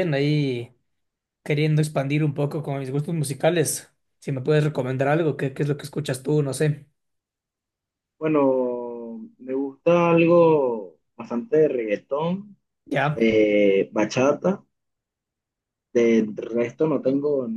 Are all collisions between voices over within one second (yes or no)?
yes